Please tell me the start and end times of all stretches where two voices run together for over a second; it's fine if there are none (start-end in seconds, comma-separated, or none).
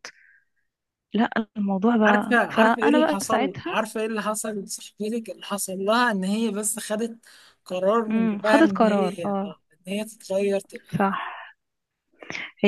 2.1-3.8, 8.1-9.6